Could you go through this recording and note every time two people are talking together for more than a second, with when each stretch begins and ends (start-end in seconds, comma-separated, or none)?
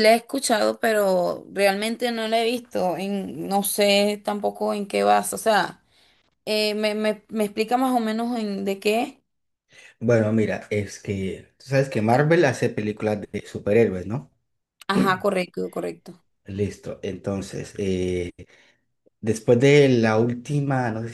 none